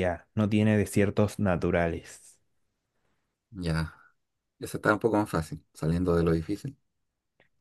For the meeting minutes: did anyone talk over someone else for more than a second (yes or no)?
no